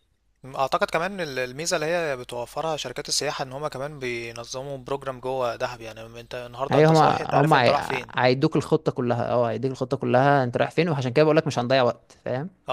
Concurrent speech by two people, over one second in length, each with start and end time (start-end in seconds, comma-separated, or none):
6.7-8.1